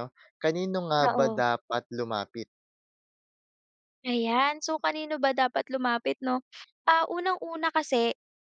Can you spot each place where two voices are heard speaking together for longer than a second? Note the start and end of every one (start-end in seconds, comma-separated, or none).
none